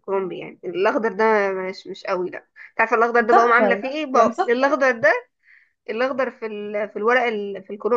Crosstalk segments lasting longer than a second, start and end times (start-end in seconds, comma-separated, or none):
3.2-4.7